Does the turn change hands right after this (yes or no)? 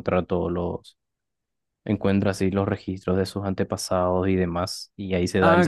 yes